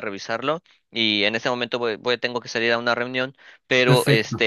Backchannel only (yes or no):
yes